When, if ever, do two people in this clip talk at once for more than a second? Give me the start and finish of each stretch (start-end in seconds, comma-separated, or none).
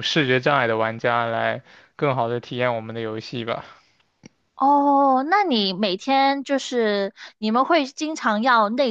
none